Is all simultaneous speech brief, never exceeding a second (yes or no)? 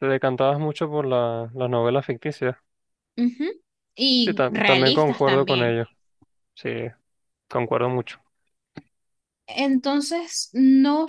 no